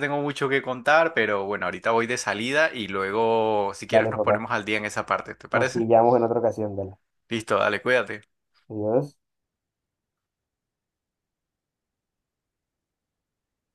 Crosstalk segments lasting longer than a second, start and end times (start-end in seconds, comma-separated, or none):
none